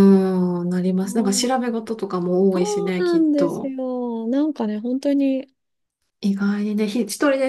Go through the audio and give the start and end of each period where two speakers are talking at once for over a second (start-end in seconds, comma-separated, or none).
2.5-3.7